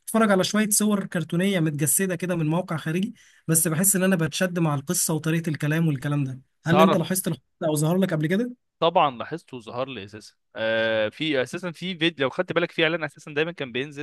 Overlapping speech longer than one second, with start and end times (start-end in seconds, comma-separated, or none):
none